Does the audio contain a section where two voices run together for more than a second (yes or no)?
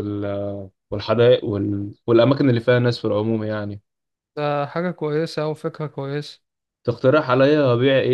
no